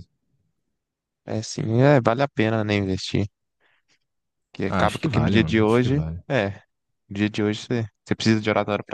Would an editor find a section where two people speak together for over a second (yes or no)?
yes